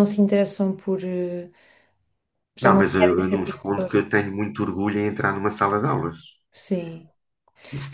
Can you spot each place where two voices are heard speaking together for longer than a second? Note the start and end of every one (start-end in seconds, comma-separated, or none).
2.6-4.0